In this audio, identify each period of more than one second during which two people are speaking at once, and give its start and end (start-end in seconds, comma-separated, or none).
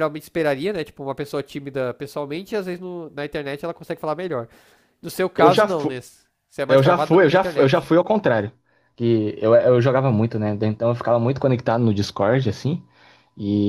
6.7-7.9